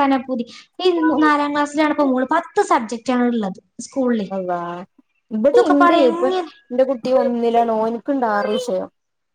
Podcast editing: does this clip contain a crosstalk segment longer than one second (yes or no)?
no